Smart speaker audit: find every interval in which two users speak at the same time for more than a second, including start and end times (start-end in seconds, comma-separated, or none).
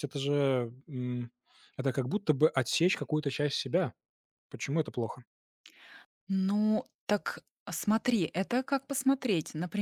none